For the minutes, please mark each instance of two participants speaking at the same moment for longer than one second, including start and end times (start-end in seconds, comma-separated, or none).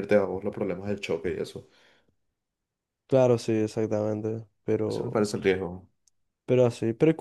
none